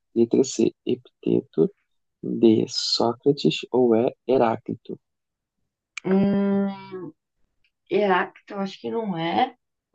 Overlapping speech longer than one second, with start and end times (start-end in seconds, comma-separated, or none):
none